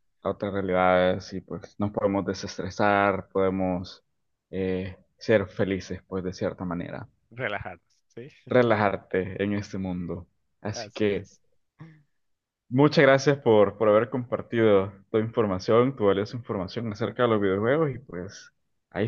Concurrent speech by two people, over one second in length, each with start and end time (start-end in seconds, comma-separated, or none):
none